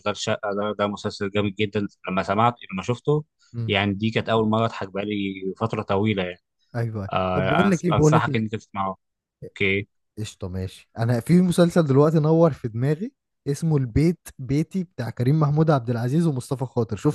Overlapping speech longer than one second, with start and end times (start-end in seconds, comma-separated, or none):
7.1-8.4